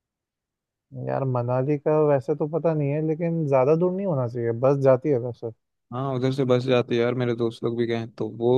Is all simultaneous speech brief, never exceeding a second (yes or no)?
yes